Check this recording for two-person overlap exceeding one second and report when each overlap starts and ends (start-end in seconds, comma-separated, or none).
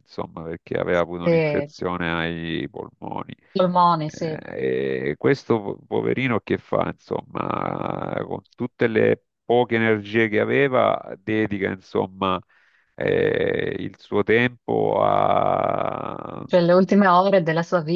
none